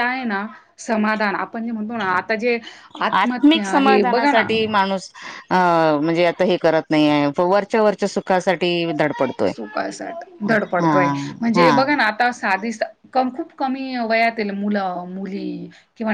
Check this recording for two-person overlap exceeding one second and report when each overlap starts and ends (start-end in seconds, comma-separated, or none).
3.2-4.5